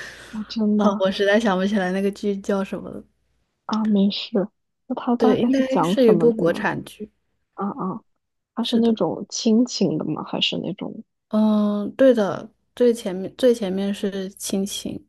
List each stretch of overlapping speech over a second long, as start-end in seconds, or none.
5.2-6.7